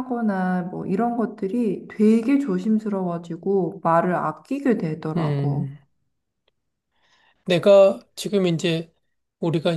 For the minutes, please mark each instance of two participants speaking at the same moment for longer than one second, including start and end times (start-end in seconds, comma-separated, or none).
none